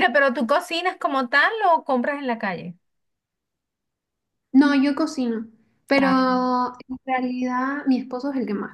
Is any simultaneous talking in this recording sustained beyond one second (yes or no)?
no